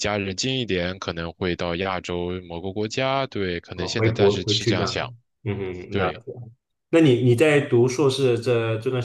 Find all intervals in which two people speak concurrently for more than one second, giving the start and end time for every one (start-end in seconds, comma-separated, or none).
3.7-5.1